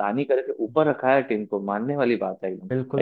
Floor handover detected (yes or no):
yes